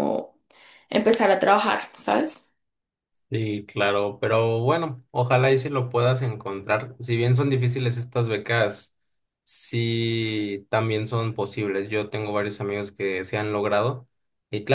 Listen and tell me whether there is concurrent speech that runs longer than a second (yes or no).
no